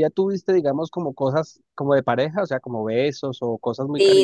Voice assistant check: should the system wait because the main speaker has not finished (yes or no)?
no